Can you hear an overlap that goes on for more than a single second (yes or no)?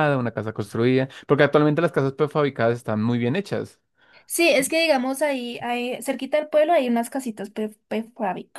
no